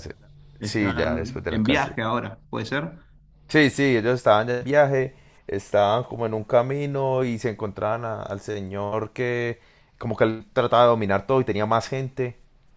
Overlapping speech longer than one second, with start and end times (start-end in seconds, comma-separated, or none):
0.6-1.9